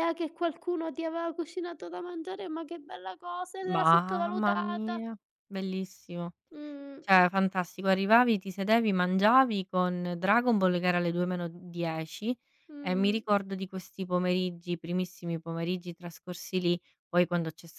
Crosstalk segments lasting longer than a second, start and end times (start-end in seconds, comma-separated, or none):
3.6-5.0